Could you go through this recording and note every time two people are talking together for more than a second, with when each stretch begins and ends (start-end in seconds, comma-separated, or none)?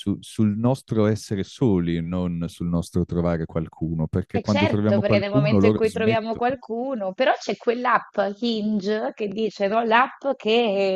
4.3-6.5